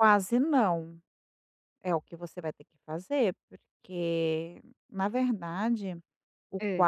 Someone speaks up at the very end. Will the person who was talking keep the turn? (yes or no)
yes